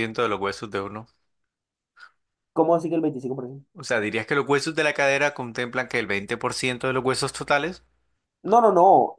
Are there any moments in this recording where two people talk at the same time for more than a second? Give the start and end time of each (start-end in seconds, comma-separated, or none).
none